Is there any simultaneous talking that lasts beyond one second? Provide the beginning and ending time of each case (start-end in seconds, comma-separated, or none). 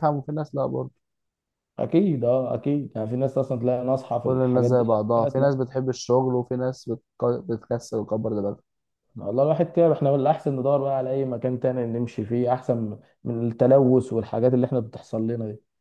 4.0-5.5